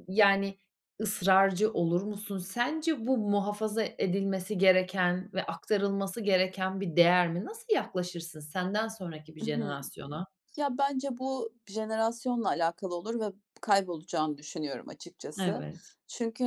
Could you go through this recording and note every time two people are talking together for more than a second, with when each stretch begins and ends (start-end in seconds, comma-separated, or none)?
none